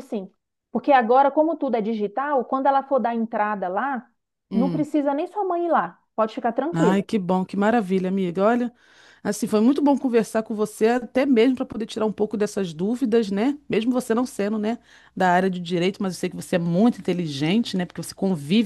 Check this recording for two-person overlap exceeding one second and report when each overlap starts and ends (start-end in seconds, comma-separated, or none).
none